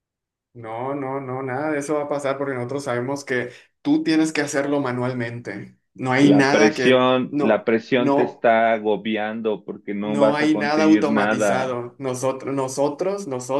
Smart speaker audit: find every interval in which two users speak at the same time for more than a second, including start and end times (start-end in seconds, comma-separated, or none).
6.2-8.5, 10.0-11.8